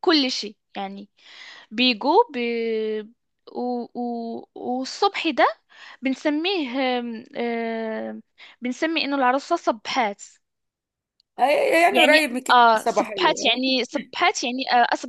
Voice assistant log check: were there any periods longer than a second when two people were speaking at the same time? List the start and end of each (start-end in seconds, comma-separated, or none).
11.9-13.6